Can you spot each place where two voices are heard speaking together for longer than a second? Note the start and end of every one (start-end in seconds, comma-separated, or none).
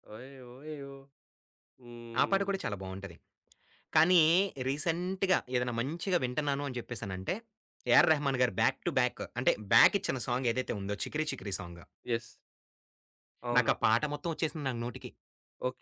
none